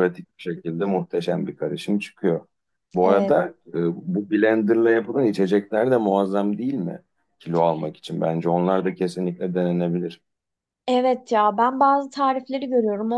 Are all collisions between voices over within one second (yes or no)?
yes